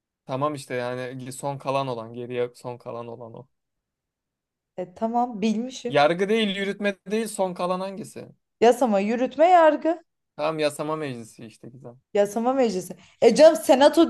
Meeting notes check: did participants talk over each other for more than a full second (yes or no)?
no